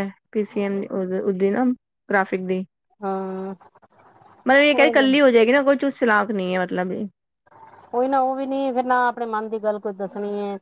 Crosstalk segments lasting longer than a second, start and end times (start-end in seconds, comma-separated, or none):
none